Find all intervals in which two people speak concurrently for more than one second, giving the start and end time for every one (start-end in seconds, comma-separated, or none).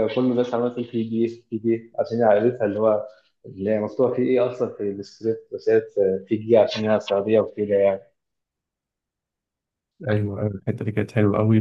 none